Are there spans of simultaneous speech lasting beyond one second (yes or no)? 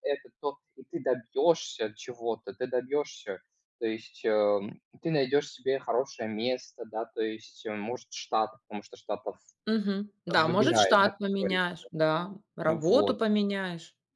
yes